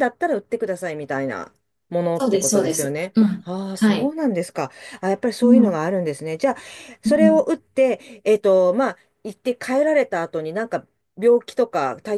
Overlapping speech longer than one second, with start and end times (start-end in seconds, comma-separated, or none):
2.1-4.1